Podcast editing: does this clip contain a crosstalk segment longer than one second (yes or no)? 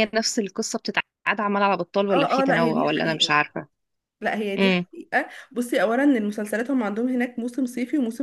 yes